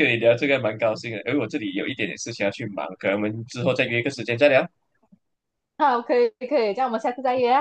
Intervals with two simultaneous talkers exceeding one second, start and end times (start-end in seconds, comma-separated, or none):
none